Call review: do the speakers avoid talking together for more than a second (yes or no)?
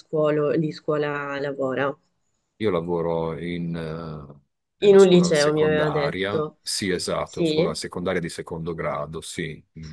no